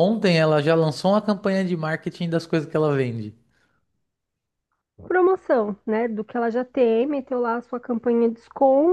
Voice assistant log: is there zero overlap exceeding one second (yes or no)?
yes